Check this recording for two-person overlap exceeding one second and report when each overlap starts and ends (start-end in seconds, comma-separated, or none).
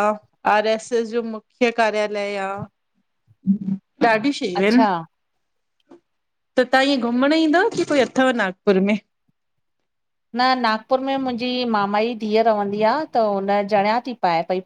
none